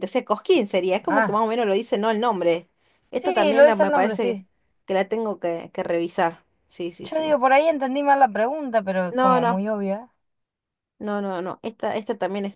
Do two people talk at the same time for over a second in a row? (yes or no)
yes